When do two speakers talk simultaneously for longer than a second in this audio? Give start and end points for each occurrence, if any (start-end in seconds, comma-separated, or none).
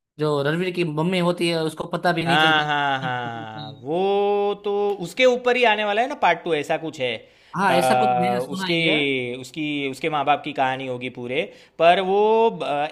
7.7-9.0